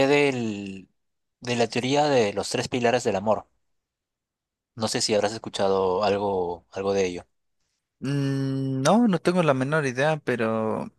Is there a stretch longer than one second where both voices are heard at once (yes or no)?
no